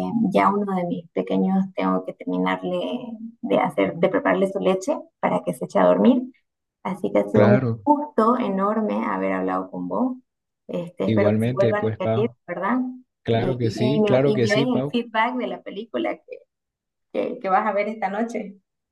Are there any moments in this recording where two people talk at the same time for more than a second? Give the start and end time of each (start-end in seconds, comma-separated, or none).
11.1-12.3, 13.3-15.0